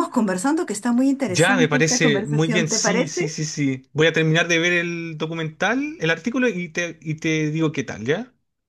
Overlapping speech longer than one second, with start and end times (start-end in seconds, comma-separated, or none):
1.3-3.3